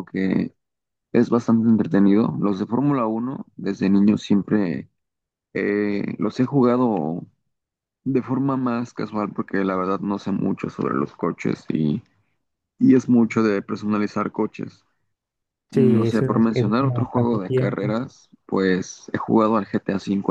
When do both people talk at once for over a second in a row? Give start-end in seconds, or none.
15.7-17.9